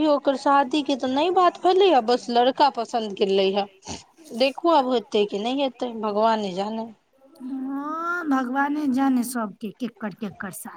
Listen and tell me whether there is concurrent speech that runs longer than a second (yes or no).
no